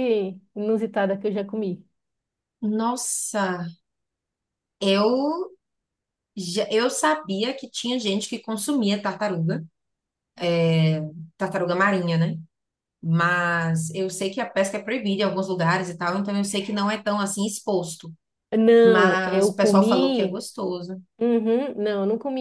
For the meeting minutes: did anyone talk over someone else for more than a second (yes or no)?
yes